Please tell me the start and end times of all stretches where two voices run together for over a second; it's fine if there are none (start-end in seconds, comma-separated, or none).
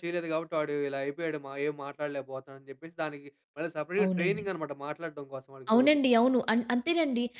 none